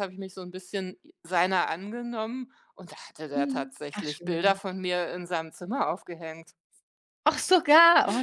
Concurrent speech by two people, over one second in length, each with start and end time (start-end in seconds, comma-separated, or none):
3.3-4.6